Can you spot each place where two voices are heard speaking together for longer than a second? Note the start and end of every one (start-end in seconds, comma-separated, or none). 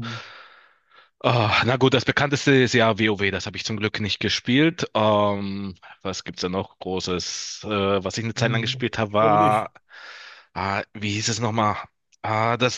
8.4-9.7